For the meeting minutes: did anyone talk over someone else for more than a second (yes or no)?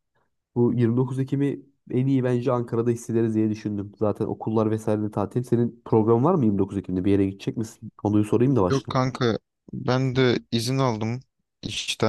no